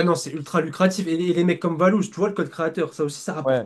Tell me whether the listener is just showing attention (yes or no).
no